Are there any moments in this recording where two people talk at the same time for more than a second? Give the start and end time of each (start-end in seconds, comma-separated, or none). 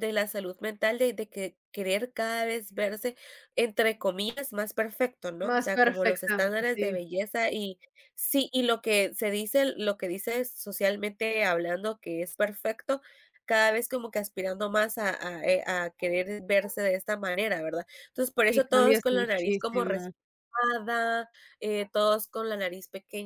5.4-6.9, 18.5-19.8